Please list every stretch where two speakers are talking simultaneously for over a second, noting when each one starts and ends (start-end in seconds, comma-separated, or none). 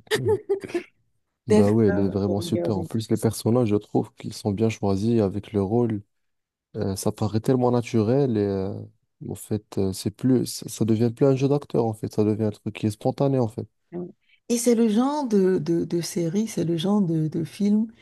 1.5-2.9